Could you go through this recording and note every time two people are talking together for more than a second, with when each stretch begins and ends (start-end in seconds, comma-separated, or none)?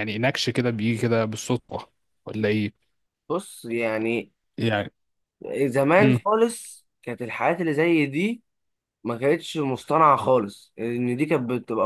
none